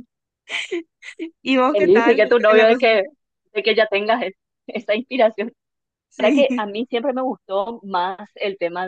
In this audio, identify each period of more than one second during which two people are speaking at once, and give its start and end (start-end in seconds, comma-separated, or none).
1.7-3.0